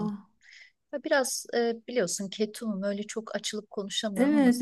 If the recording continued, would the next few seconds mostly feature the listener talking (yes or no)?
yes